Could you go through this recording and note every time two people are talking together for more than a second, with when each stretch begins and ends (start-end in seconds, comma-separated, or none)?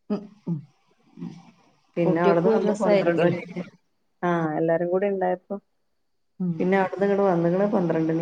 2.1-3.4